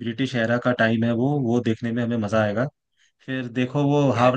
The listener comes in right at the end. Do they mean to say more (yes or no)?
no